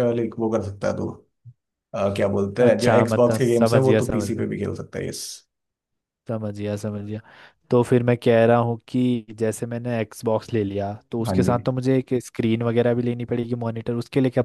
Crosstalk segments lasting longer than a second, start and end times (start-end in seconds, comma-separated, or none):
2.7-4.5